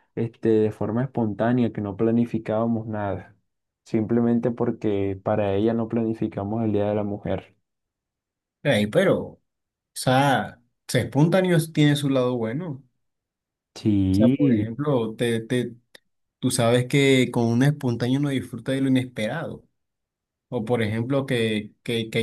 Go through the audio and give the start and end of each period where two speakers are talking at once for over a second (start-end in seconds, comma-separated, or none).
none